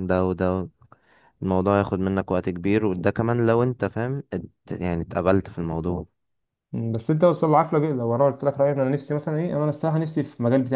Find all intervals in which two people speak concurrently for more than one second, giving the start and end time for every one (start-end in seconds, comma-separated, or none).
none